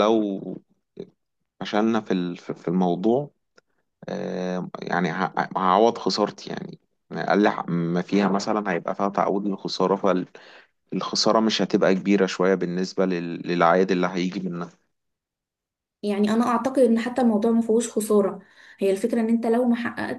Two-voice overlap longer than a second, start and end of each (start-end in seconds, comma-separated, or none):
none